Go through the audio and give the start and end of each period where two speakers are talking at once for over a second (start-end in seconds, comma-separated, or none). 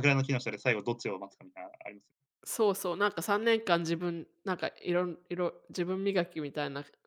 none